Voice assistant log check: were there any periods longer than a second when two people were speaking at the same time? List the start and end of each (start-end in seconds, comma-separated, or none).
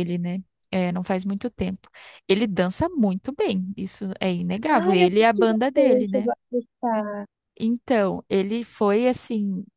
4.7-6.3